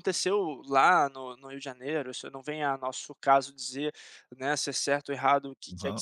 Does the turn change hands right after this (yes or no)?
no